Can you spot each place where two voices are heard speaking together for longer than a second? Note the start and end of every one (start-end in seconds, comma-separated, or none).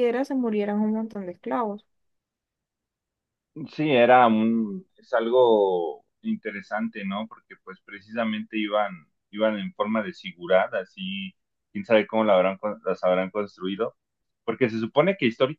none